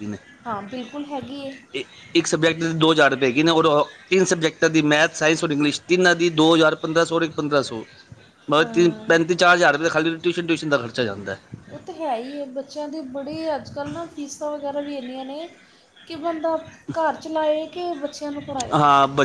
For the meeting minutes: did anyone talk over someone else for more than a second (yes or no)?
no